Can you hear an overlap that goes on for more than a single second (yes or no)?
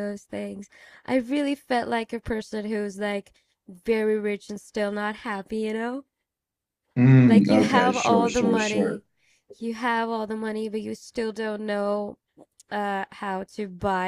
yes